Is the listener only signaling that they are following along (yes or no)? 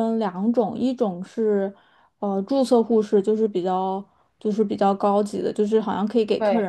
yes